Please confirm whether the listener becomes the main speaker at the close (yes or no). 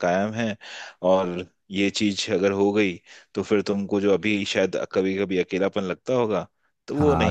yes